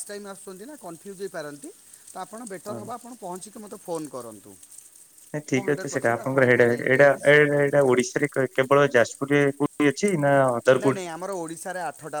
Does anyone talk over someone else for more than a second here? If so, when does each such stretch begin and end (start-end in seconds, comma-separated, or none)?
5.5-7.9